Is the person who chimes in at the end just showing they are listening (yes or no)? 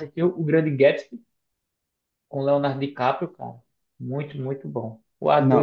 no